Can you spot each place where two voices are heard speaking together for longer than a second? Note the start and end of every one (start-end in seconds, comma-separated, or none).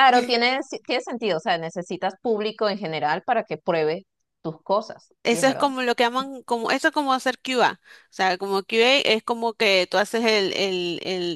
none